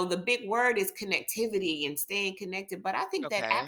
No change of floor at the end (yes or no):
yes